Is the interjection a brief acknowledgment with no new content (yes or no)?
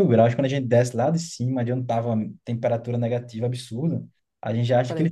yes